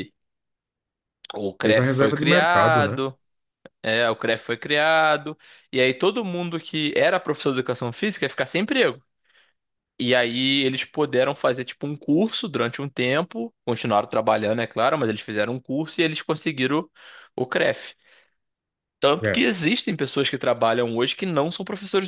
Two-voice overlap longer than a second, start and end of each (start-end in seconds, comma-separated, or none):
1.6-3.0